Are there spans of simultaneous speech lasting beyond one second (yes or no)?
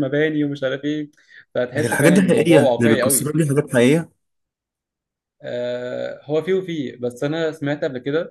yes